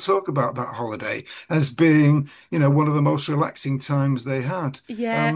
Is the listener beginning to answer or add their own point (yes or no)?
yes